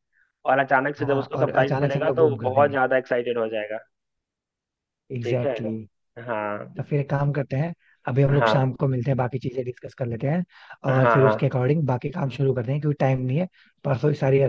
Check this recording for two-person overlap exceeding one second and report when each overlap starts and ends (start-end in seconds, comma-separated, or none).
1.0-2.8